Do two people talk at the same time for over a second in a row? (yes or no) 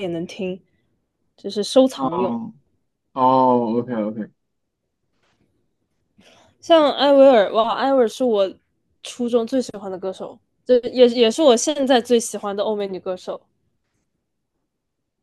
no